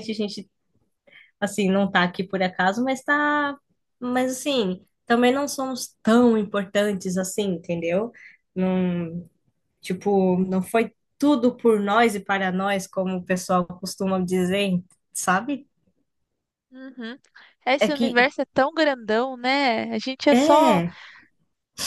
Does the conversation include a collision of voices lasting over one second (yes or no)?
no